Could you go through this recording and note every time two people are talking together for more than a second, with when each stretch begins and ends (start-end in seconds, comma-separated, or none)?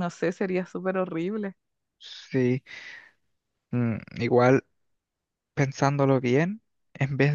none